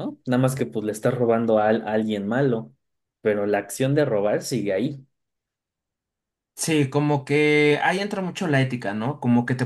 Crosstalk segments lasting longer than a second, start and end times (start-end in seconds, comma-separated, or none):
none